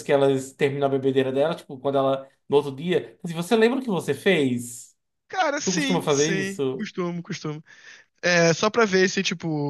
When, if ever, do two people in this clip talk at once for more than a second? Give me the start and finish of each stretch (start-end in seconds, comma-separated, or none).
5.6-6.9